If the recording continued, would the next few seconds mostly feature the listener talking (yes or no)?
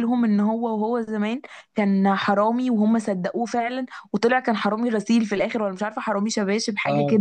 yes